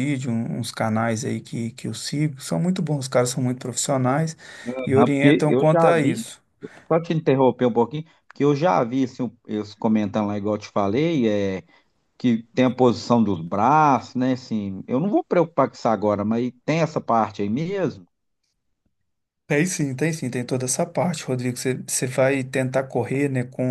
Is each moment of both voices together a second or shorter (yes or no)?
no